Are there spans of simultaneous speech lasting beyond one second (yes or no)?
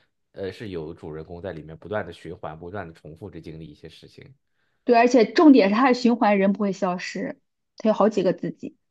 no